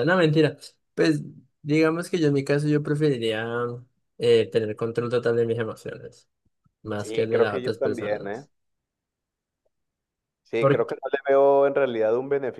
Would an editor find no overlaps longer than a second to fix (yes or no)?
no